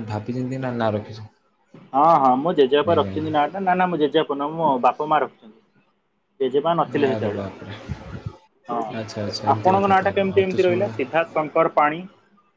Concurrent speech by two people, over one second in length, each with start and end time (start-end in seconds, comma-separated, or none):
9.0-11.0